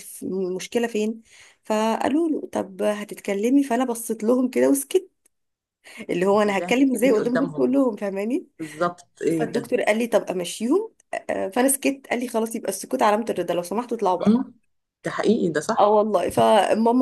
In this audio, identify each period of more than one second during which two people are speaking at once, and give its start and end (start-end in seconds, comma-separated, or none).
6.3-7.8